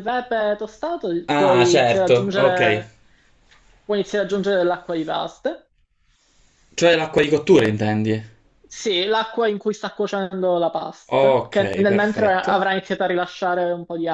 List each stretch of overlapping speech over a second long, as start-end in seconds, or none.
1.3-2.6, 11.2-12.6